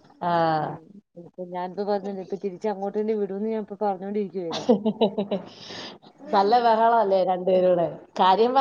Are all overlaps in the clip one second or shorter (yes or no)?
yes